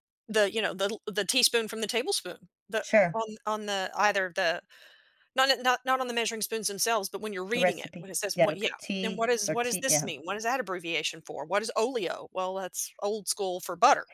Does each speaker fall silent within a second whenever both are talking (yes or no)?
no